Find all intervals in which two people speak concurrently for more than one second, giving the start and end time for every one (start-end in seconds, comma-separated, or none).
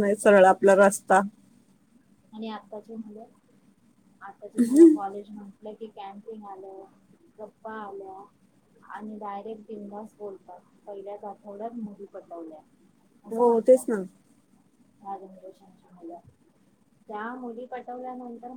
none